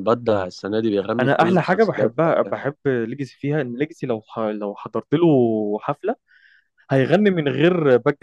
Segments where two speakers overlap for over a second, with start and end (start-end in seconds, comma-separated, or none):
1.2-2.6